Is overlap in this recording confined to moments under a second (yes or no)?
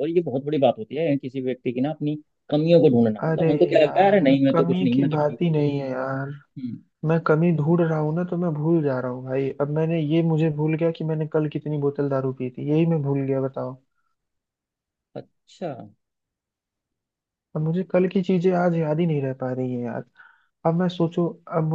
no